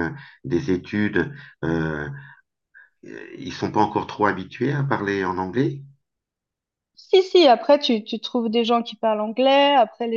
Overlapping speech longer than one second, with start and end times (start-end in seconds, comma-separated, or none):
none